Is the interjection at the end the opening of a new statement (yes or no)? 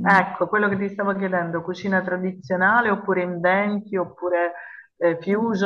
no